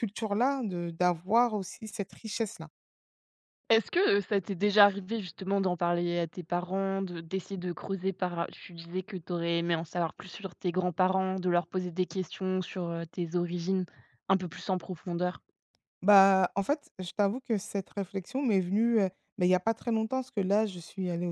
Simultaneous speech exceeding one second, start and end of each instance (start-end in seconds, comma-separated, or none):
none